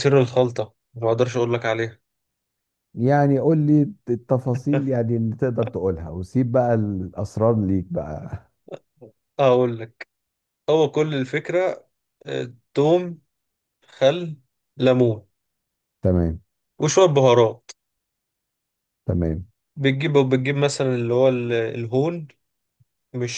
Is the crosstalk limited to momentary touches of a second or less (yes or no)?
yes